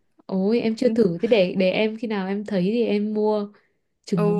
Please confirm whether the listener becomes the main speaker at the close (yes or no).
yes